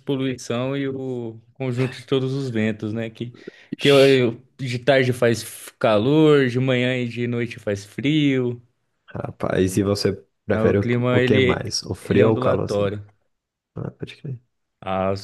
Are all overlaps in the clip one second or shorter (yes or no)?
no